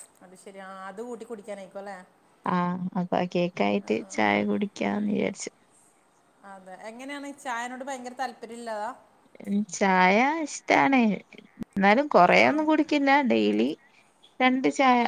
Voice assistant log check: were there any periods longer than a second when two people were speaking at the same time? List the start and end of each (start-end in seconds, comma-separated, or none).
none